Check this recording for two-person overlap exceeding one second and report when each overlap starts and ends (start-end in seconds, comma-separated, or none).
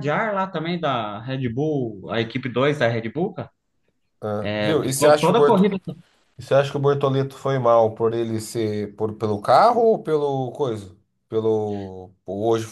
4.4-5.6